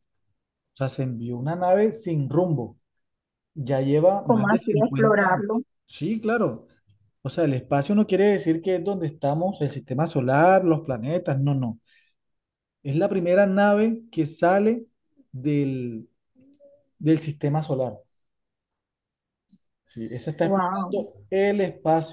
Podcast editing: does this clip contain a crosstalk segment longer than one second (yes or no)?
yes